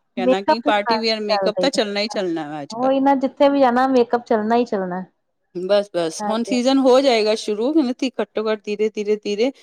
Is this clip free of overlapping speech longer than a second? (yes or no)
no